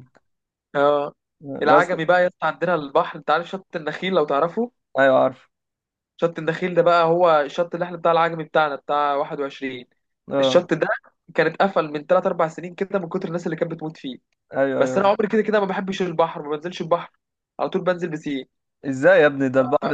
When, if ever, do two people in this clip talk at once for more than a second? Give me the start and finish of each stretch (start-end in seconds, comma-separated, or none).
none